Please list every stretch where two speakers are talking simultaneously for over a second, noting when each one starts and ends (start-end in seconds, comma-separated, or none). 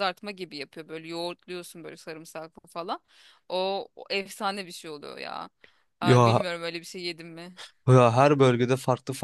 none